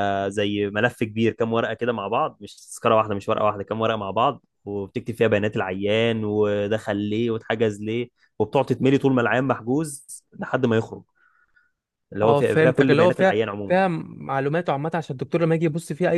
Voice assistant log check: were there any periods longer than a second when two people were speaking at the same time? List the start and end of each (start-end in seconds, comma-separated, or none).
12.2-13.8